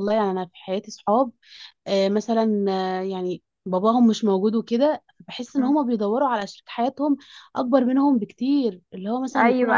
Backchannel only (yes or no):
no